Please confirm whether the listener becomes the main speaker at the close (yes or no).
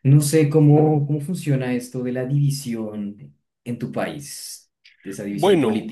yes